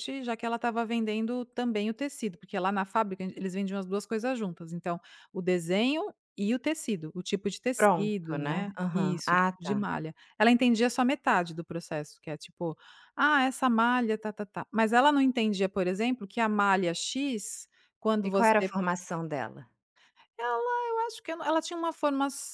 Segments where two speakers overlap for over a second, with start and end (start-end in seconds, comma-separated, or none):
7.8-9.9